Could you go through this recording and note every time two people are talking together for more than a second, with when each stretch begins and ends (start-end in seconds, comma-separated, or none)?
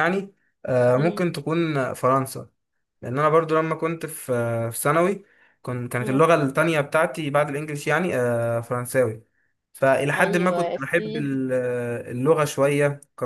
10.2-11.4